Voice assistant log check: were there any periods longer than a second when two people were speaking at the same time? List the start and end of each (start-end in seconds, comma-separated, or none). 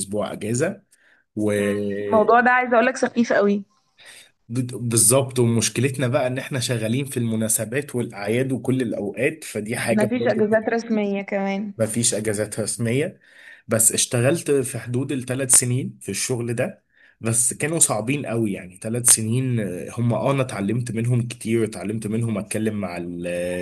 none